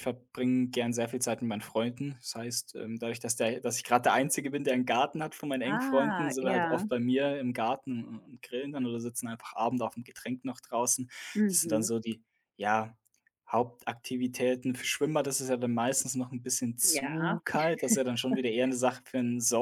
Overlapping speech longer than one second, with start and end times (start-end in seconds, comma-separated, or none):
5.6-6.9